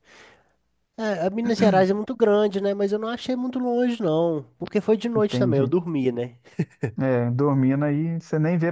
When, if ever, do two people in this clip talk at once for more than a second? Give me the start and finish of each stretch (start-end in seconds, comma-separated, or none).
none